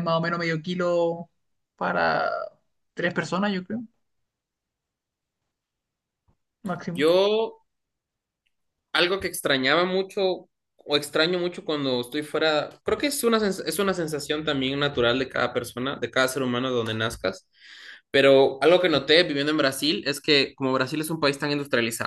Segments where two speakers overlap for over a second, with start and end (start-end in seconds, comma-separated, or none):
none